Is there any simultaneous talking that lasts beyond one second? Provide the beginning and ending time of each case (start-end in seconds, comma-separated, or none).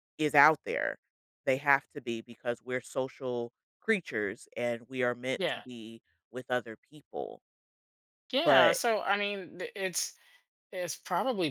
none